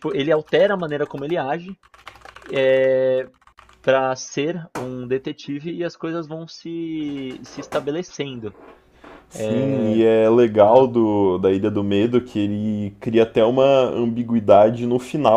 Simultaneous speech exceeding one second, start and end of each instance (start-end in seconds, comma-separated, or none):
none